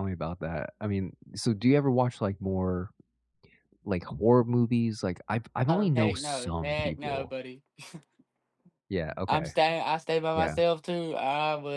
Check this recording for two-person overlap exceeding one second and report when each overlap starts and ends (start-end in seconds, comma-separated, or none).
5.7-7.3